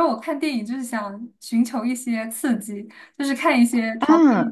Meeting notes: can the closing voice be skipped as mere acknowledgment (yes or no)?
yes